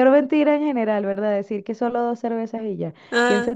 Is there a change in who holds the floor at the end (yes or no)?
no